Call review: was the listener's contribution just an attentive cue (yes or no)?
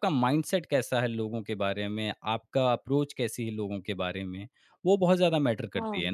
no